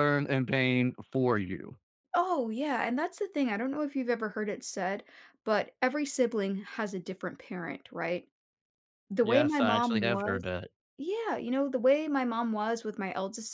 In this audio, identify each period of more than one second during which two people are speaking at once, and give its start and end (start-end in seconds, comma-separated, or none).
9.2-10.4